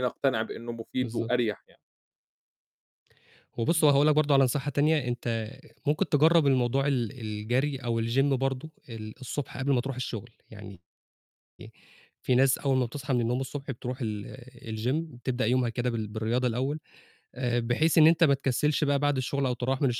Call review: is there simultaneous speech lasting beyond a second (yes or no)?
no